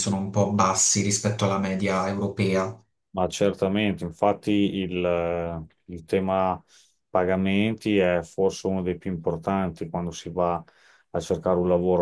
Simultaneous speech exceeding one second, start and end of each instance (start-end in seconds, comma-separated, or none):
none